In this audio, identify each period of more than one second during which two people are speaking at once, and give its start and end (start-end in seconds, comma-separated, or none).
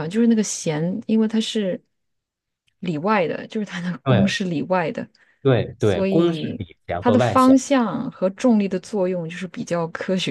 5.8-7.6